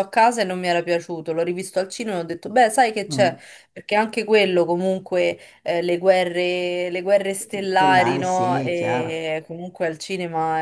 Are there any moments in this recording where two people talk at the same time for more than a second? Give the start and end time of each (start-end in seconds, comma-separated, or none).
7.7-9.3